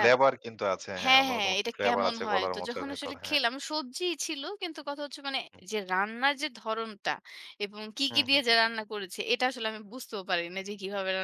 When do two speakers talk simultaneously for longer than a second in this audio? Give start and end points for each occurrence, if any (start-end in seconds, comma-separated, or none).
1.0-3.4